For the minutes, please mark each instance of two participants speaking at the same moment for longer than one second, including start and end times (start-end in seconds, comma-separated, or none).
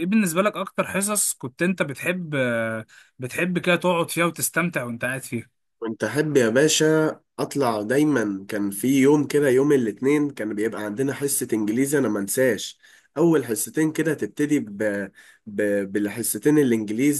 none